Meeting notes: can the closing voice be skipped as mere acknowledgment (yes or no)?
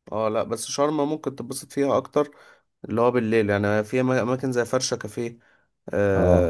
yes